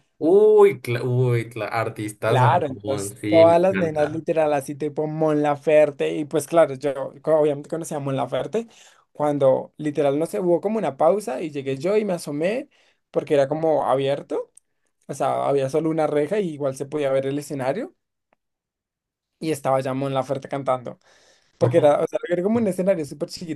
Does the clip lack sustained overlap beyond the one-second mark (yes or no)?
no